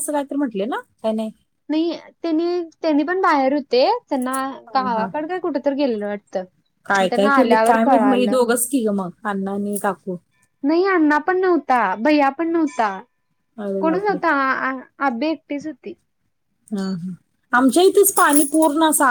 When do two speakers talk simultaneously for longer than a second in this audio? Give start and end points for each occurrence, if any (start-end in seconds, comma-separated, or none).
7.0-8.4